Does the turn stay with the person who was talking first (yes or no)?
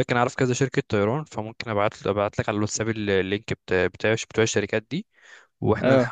yes